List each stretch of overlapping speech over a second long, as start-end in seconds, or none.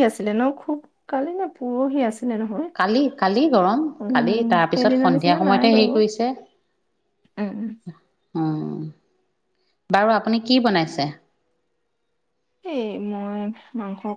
4.0-5.9